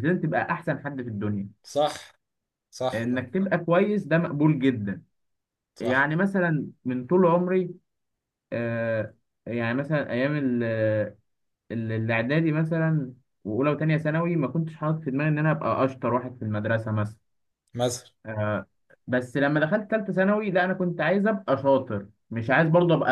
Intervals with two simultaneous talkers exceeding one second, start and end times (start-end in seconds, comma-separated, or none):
none